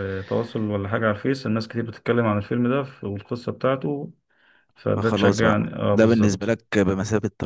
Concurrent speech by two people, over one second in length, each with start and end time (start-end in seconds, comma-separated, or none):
5.0-6.6